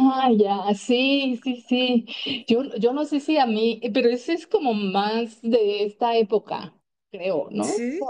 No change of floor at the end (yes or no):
yes